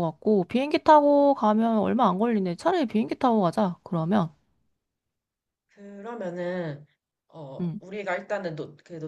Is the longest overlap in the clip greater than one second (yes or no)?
no